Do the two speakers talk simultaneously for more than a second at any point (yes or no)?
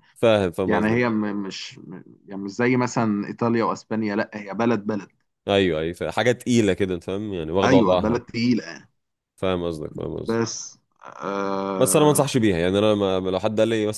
no